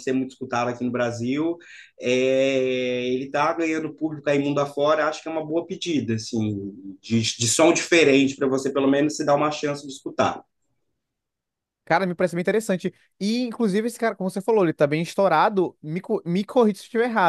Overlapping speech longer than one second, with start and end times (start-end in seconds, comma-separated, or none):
none